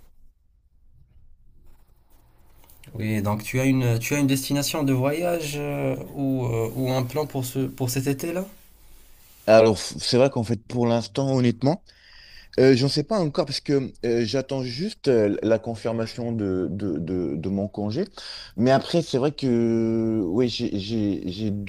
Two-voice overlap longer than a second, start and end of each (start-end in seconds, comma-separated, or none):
none